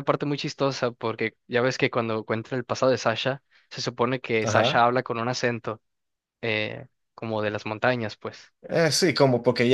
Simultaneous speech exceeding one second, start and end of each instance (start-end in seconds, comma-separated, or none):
none